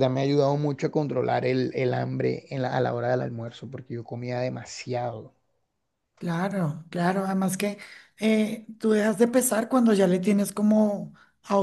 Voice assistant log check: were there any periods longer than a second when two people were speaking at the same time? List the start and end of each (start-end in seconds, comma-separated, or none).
none